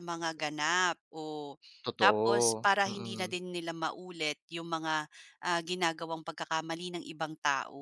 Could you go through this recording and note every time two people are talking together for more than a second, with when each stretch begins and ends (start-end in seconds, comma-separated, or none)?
2.0-3.3